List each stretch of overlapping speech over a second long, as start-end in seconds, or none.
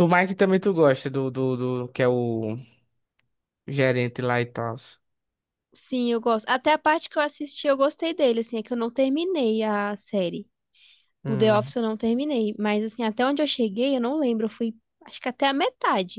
none